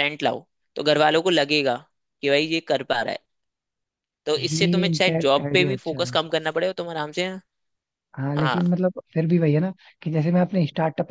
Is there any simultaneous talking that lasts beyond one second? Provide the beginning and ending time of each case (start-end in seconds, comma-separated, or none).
4.4-6.2